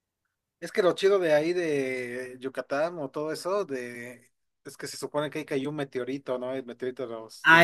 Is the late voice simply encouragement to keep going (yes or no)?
no